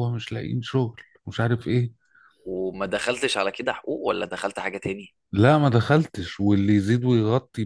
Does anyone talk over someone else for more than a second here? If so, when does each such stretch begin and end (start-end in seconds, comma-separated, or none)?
none